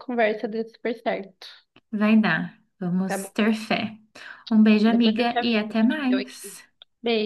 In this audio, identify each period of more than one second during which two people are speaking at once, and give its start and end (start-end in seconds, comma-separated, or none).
4.9-6.6